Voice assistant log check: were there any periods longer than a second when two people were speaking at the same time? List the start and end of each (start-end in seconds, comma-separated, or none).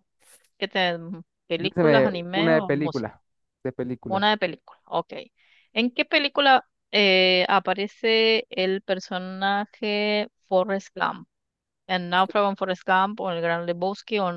1.6-3.1